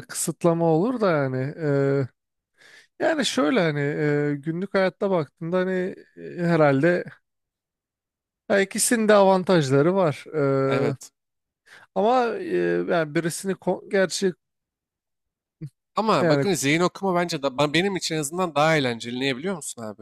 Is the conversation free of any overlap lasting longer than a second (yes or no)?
yes